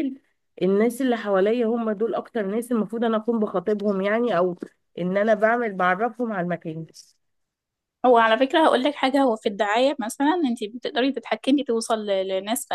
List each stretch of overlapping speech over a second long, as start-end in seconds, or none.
none